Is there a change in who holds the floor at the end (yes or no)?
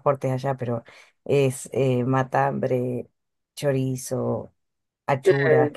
no